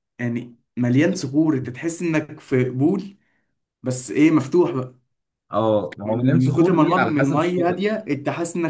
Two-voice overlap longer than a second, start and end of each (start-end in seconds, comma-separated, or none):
6.0-7.8